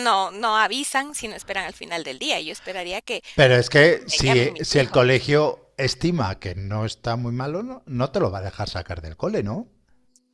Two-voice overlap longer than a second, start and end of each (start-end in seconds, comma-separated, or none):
3.6-5.0